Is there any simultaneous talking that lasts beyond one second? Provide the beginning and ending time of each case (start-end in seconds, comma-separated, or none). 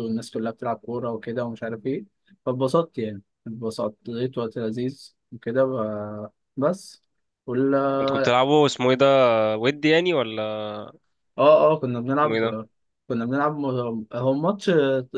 none